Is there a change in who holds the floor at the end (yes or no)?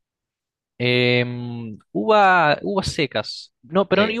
no